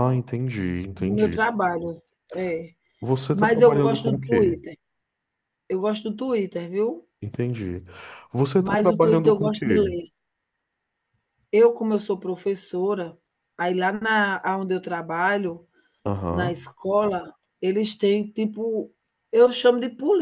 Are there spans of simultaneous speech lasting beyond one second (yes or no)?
yes